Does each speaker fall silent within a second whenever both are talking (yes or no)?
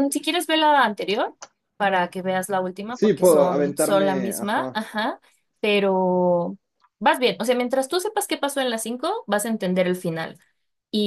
no